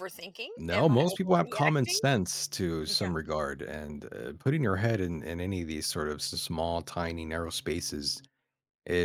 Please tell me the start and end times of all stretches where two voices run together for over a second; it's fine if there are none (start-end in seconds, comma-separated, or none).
0.6-2.0